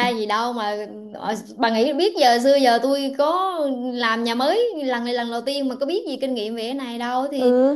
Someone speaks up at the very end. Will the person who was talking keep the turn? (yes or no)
no